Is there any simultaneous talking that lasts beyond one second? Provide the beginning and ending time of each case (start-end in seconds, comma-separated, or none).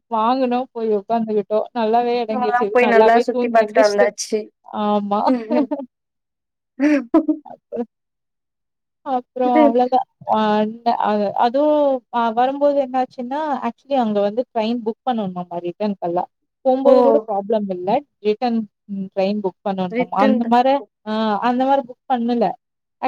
2.3-4.1